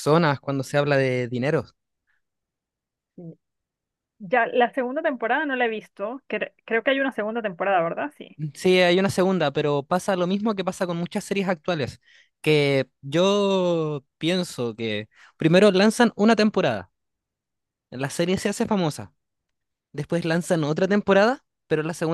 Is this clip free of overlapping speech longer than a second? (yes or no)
yes